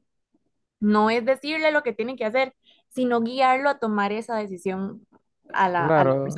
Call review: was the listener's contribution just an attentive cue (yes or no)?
no